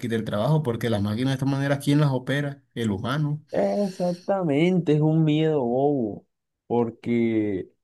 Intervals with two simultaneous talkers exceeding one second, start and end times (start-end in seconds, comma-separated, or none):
none